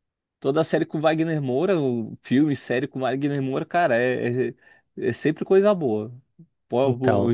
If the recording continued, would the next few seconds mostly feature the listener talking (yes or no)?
yes